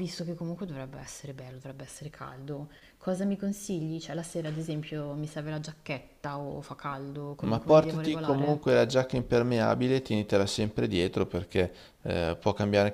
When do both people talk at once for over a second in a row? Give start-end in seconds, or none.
7.4-8.7